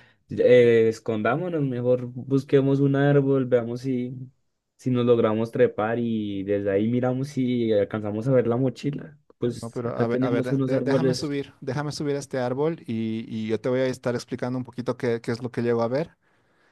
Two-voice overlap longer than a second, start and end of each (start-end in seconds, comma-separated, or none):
9.5-11.4